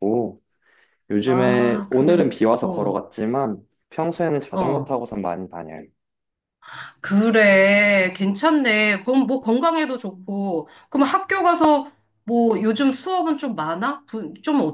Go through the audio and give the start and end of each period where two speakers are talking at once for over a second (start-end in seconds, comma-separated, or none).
1.2-3.0